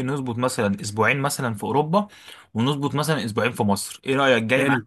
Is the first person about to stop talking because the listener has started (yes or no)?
yes